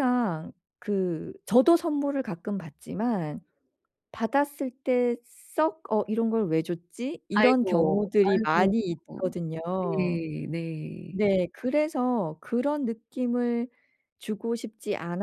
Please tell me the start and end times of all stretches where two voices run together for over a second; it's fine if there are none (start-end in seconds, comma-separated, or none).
7.3-8.7